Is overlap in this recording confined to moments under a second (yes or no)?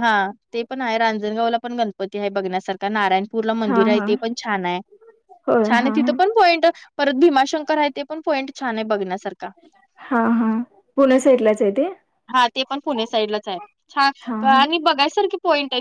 yes